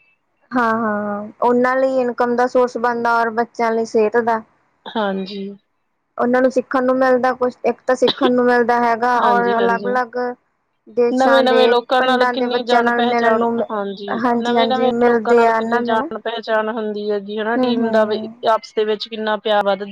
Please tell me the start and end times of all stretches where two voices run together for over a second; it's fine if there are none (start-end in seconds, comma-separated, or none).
11.2-13.6, 14.4-16.0